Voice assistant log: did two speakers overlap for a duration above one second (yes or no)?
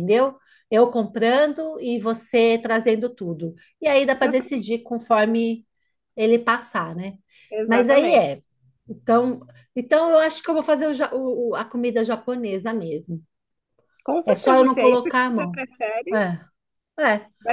yes